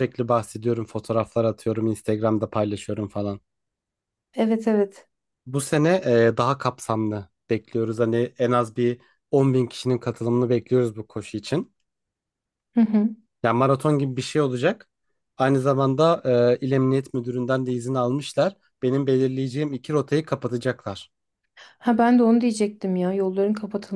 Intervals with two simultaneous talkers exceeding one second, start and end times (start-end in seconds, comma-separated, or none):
none